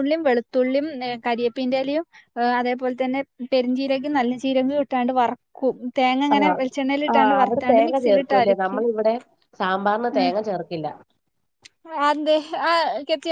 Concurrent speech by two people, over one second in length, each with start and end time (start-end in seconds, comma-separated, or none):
7.1-8.8